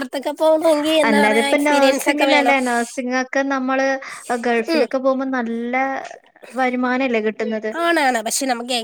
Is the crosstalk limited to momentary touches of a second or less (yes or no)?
no